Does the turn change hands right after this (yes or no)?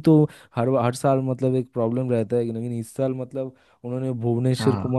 no